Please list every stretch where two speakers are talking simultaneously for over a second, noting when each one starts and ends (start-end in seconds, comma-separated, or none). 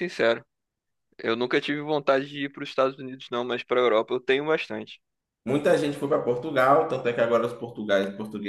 none